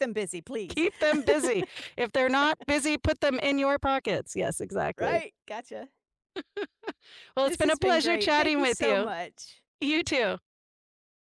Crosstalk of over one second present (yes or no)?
yes